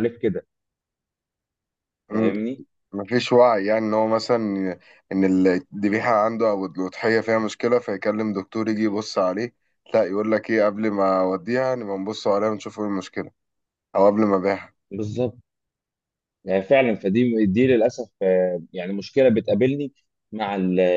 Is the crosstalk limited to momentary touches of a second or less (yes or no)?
yes